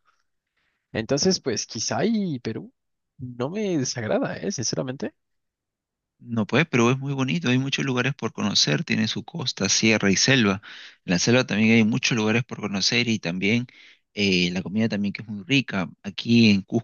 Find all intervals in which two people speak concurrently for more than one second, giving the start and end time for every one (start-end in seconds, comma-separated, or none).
none